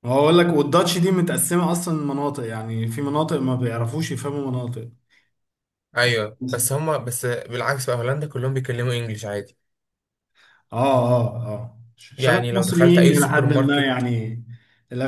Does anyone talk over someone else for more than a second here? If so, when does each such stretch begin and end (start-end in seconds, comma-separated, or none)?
12.2-14.1